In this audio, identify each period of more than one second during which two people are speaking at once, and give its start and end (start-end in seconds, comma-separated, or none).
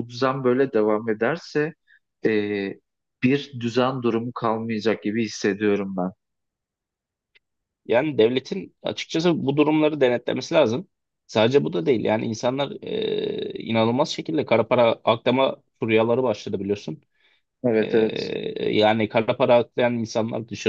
none